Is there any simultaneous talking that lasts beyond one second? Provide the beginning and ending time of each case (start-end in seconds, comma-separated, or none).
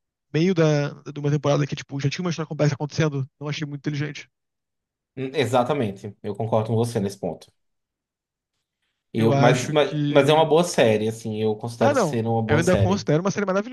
9.2-10.6, 11.8-13.1